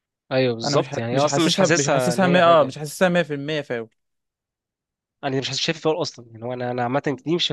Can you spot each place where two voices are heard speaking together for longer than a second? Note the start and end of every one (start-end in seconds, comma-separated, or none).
0.6-2.8